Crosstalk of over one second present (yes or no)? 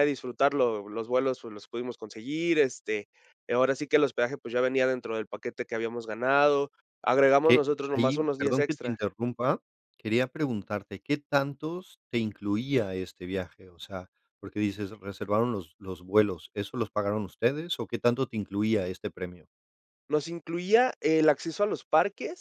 yes